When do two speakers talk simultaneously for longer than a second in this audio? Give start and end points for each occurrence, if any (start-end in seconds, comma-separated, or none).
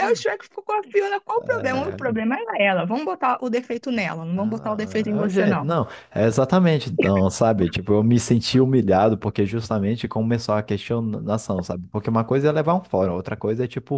4.4-5.7